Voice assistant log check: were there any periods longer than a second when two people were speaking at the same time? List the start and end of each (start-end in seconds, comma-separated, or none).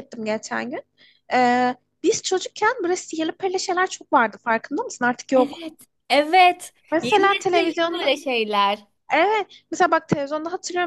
6.9-8.1